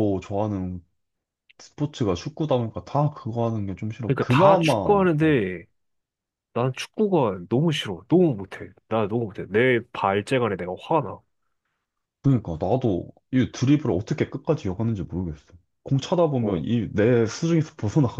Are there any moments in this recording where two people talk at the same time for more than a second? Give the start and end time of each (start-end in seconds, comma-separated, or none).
4.0-5.4